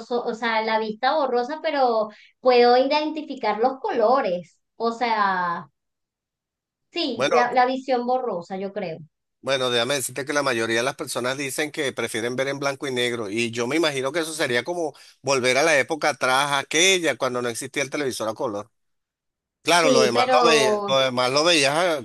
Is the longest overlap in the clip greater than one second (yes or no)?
yes